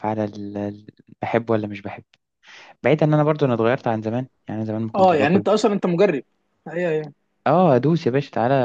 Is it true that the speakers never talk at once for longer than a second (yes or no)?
yes